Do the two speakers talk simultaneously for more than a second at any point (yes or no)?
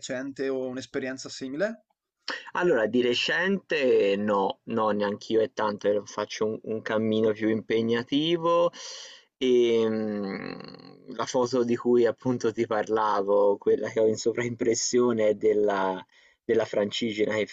no